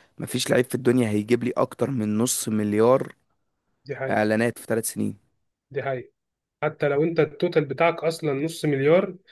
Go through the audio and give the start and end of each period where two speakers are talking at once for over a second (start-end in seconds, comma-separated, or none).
none